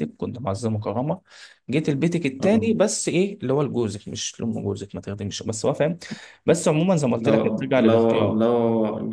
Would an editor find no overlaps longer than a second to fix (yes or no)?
no